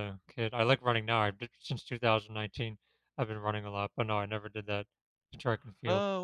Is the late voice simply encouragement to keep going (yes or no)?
no